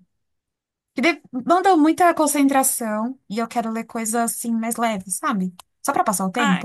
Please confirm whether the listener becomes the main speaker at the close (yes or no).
yes